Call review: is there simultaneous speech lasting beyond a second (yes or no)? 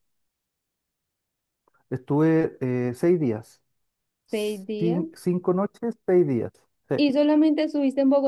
no